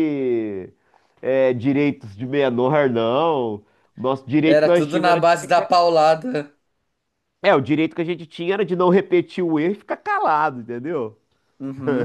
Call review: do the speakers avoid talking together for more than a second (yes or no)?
no